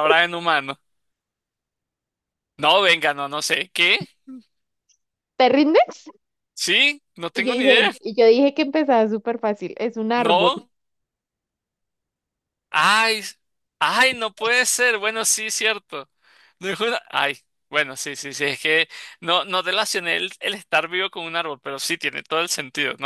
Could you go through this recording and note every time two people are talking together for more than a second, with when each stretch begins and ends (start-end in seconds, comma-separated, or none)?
none